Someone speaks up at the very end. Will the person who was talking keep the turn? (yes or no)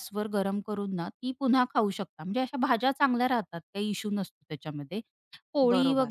yes